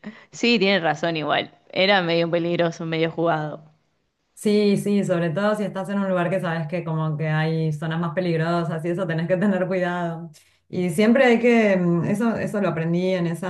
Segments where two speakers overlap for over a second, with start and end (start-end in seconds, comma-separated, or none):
none